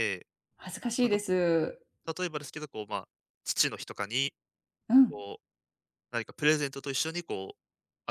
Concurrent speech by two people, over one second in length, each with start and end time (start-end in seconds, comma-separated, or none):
none